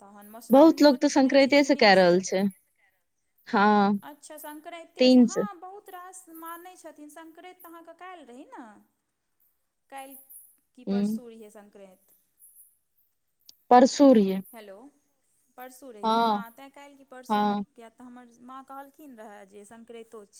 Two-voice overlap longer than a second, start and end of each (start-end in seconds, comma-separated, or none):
0.5-2.3